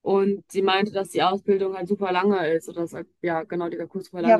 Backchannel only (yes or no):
no